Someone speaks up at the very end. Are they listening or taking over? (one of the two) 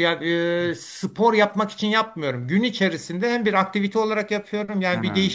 listening